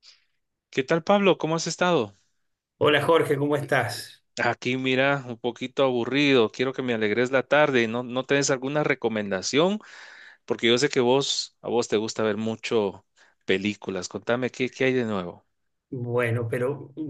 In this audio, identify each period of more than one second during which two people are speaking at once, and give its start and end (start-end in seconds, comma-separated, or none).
none